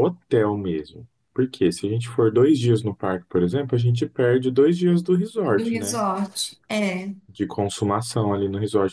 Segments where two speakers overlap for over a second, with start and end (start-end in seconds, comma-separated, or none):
none